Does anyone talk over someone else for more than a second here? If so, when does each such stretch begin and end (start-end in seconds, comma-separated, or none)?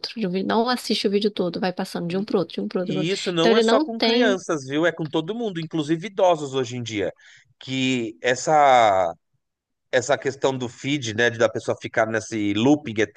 2.8-4.4